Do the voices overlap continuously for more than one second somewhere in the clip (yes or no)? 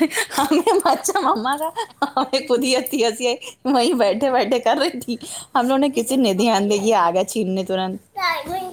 yes